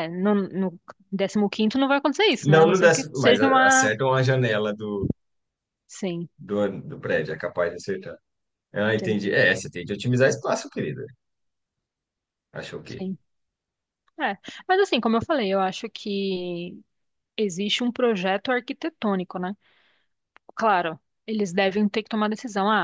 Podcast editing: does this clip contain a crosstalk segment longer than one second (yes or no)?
yes